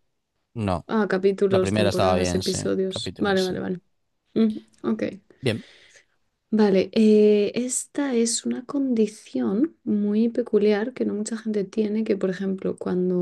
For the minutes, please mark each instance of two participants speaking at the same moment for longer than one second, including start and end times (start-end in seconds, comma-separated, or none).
1.5-3.6